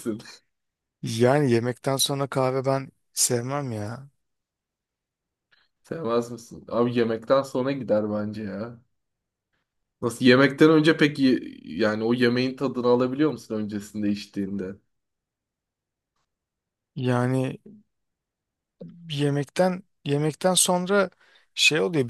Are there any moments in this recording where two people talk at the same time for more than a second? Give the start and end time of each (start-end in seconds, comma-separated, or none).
none